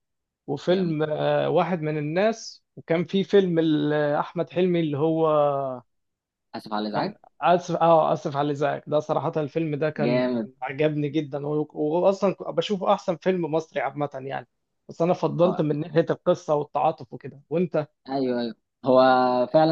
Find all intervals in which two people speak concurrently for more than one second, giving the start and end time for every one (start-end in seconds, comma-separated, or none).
none